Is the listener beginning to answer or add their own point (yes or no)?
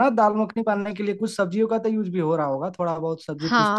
yes